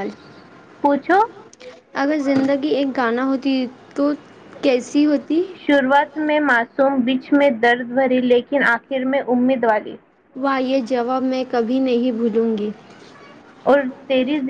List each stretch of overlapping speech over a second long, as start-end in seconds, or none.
none